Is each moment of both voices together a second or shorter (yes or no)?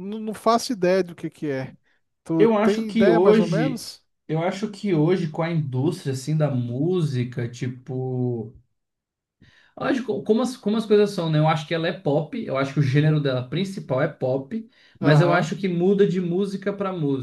no